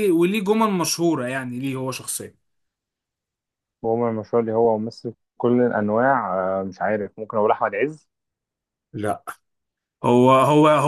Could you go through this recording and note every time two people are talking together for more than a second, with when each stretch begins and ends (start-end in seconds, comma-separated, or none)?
none